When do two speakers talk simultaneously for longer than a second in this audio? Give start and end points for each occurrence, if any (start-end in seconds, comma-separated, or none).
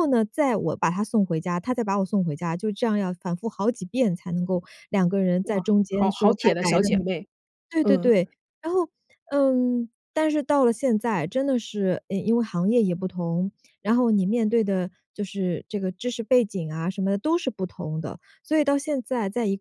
5.4-7.1